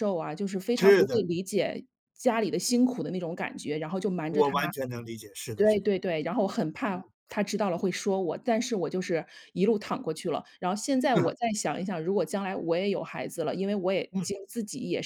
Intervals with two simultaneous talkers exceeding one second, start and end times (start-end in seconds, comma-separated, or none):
none